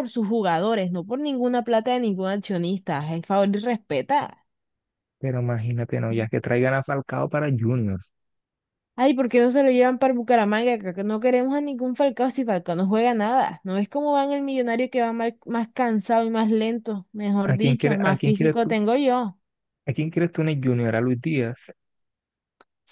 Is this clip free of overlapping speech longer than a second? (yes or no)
no